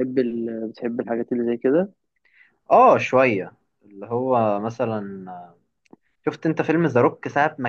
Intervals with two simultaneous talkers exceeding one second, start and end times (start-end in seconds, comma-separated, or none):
none